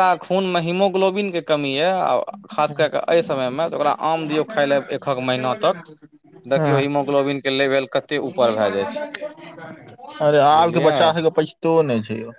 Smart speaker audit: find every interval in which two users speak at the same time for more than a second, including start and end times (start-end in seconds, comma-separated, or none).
none